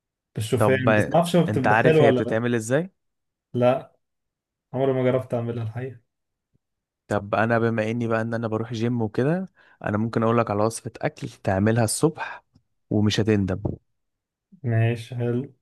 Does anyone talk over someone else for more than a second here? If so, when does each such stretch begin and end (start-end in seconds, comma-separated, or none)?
0.6-2.4